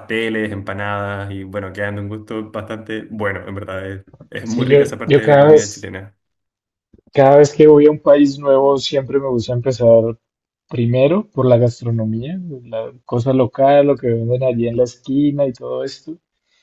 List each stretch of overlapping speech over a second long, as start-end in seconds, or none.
4.4-5.9